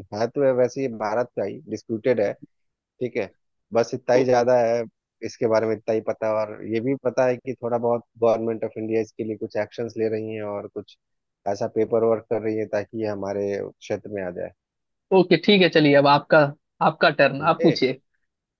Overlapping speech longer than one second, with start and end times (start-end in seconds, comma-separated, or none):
none